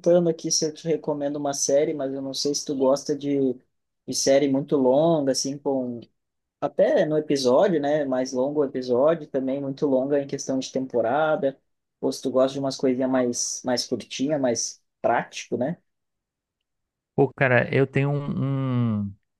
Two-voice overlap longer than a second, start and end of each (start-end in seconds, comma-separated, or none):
none